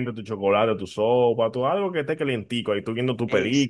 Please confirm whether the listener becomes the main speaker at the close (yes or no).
yes